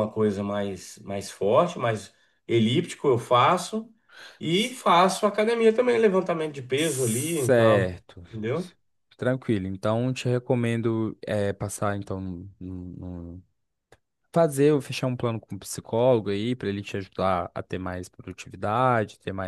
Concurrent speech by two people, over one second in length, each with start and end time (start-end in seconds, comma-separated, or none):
6.7-8.2